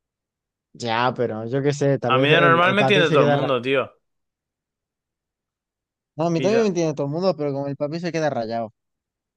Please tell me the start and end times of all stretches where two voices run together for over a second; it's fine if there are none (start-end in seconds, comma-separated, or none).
2.1-3.6